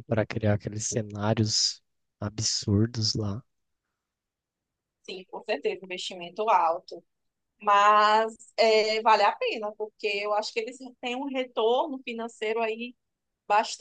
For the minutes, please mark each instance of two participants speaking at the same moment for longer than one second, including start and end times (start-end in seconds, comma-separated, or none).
none